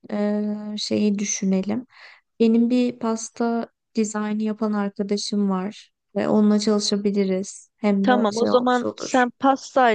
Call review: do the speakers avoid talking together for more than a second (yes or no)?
no